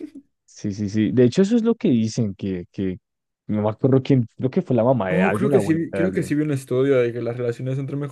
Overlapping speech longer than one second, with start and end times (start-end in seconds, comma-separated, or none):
5.1-6.3